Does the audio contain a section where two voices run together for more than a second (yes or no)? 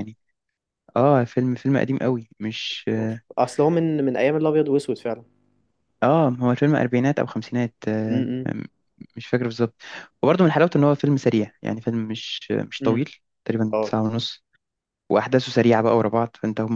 no